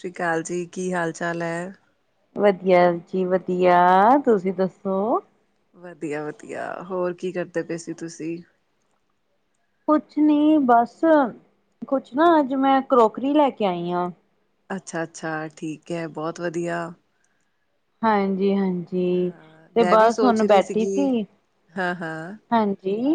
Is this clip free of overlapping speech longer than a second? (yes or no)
no